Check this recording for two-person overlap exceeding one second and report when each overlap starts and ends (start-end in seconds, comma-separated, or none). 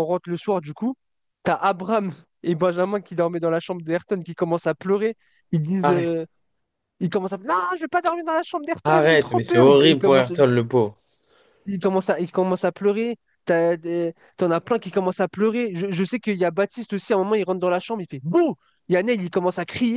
8.8-10.3